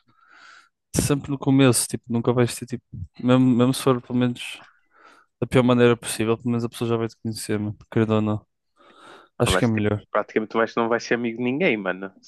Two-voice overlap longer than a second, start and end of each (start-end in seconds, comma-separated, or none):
none